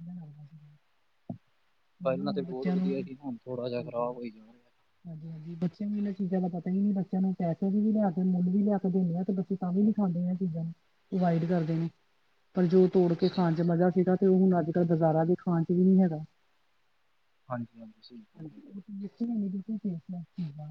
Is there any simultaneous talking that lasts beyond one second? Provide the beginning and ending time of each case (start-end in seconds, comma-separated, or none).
none